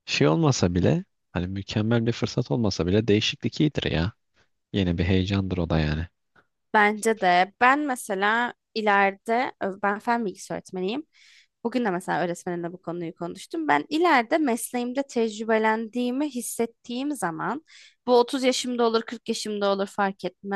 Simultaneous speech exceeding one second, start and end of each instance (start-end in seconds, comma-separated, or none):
none